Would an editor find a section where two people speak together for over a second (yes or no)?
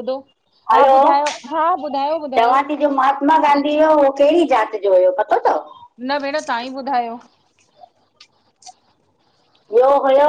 no